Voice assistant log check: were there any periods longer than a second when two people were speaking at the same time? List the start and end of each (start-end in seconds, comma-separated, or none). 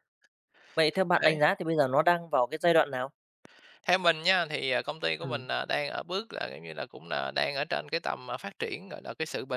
none